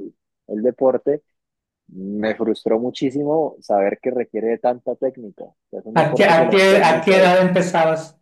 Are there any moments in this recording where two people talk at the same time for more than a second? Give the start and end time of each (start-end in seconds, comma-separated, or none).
6.0-7.4